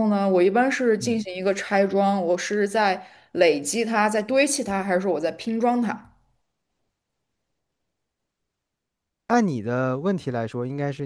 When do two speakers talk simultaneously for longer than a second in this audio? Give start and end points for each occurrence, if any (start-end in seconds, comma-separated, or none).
none